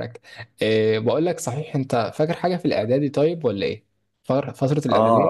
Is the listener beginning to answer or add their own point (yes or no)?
yes